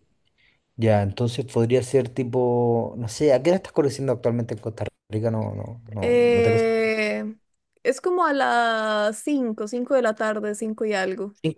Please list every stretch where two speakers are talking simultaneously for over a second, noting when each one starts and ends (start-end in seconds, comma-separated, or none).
none